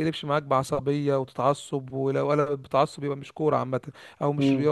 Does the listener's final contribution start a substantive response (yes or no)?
yes